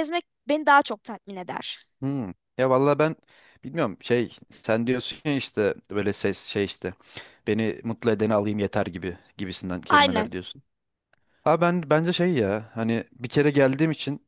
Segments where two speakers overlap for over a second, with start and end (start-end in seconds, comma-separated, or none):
none